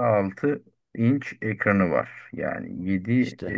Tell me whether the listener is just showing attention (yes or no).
yes